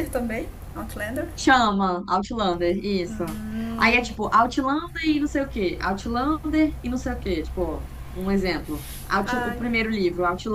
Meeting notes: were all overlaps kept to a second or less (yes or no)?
yes